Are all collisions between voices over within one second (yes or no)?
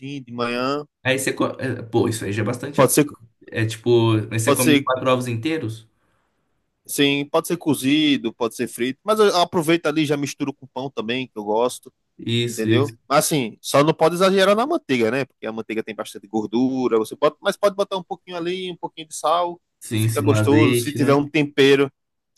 no